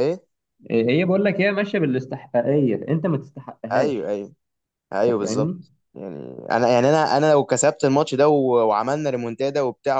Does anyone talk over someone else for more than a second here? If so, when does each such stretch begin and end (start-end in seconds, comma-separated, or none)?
none